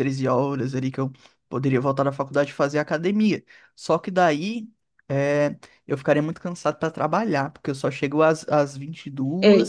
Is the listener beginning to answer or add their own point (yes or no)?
yes